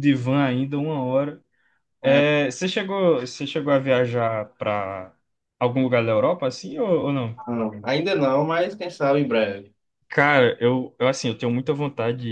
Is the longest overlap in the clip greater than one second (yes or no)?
no